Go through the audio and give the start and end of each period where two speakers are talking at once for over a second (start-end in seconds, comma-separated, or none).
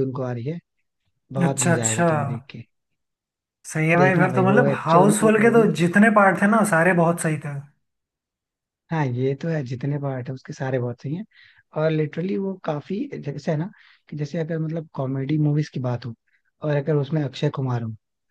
4.0-5.7